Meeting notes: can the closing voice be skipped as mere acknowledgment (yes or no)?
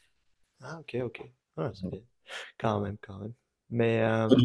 no